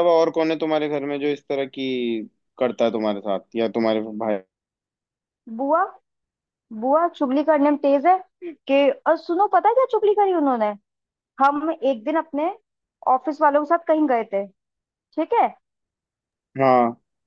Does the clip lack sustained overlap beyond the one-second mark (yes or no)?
yes